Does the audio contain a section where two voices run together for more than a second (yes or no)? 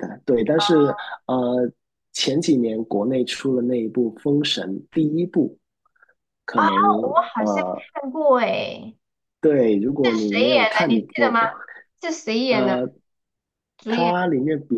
yes